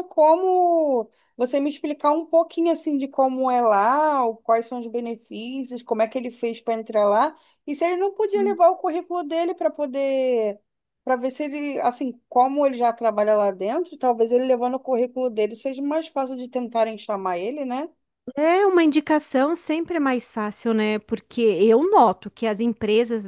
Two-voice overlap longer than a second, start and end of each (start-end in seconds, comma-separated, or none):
none